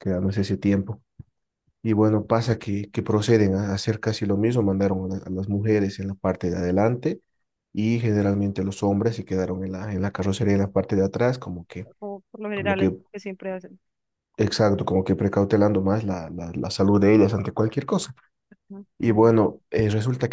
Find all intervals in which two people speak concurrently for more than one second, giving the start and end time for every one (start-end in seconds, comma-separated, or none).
none